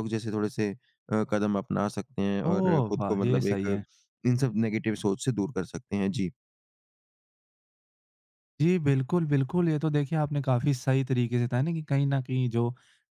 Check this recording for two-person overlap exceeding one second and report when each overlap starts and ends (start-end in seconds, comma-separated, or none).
2.5-3.8